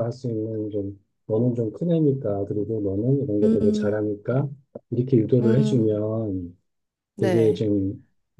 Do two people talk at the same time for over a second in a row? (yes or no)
no